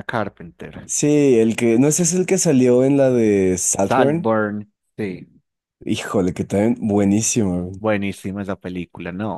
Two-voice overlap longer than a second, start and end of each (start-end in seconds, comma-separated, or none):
none